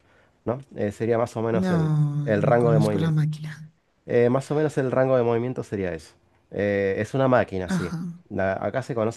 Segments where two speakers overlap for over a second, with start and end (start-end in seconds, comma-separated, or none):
1.5-3.2